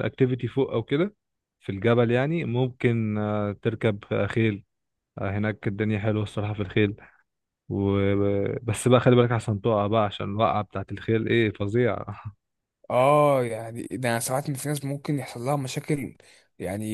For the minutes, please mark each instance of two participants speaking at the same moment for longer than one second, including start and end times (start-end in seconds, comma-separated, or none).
none